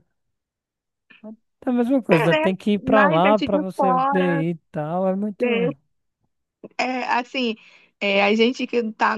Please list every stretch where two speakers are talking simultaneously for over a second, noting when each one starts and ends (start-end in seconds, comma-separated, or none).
2.1-4.4